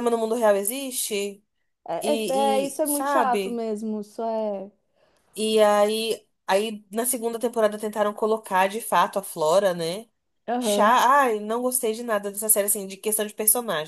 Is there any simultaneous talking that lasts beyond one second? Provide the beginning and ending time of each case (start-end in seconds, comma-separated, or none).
2.0-3.6